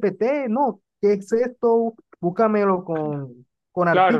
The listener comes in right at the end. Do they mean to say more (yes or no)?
yes